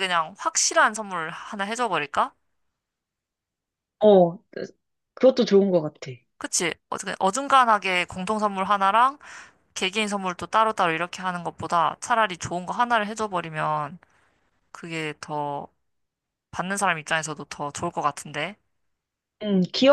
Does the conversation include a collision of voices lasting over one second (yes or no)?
no